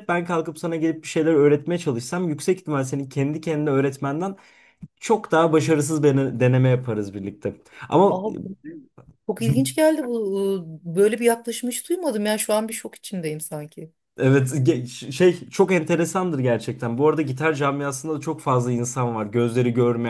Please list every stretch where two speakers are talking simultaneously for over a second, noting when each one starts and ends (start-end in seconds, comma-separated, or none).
none